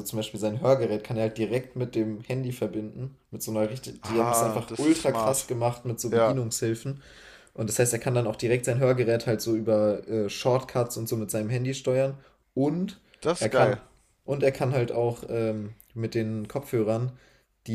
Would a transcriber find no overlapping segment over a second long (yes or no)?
no